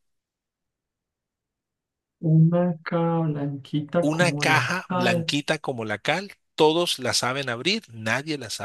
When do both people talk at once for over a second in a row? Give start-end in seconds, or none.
4.0-5.4